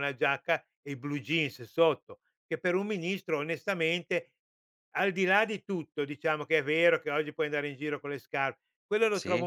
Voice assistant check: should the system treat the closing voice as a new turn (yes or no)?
no